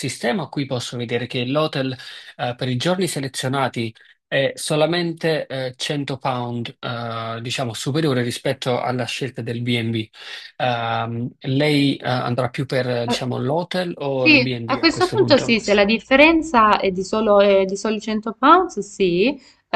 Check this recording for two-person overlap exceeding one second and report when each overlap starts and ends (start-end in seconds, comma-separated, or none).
14.1-15.6